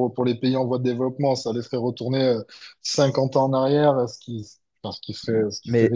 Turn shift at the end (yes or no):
yes